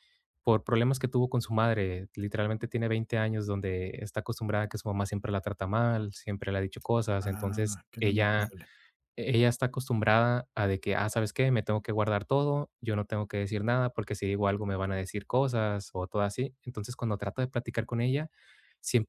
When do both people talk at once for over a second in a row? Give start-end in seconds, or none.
7.2-8.5